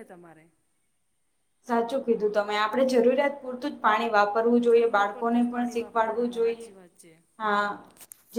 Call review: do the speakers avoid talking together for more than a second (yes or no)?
no